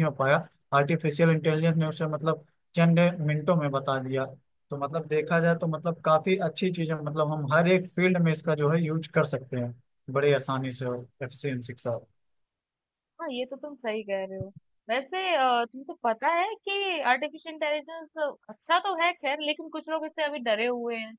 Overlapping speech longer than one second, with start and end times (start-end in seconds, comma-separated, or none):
none